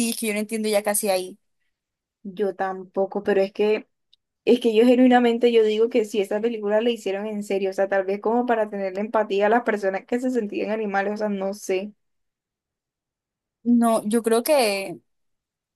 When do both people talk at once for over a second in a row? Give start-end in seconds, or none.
none